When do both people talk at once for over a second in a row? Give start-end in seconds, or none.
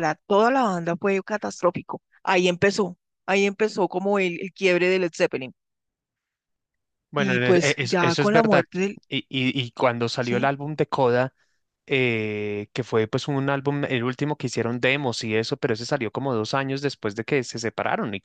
7.2-8.7